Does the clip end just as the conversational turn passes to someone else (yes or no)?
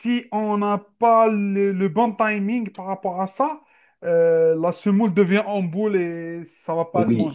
yes